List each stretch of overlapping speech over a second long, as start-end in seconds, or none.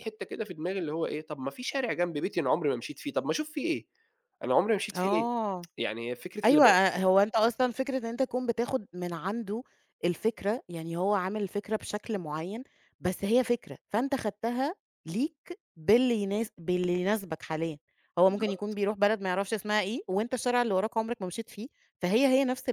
none